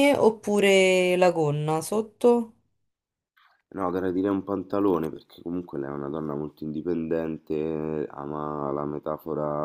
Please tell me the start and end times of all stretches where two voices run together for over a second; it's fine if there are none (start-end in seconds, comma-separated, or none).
none